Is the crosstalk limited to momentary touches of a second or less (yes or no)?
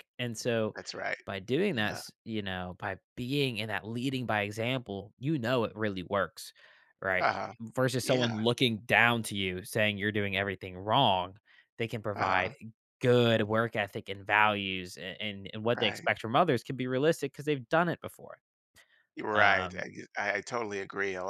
yes